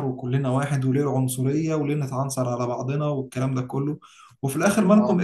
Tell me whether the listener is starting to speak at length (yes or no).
no